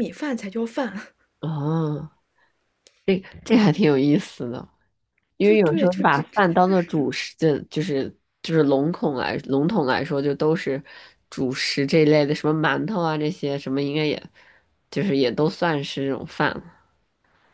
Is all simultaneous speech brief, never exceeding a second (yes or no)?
no